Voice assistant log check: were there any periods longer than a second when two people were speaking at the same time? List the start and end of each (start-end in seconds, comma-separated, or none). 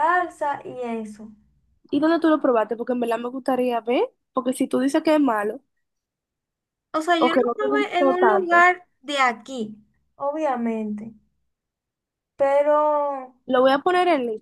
7.2-8.7